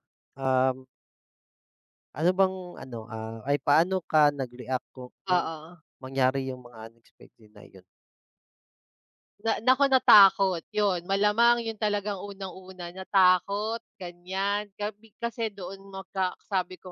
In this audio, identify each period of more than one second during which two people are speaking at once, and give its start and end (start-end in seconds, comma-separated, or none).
none